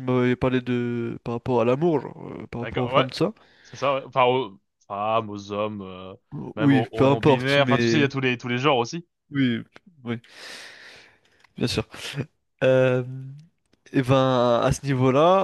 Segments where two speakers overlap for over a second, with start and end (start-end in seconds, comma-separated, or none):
6.6-8.1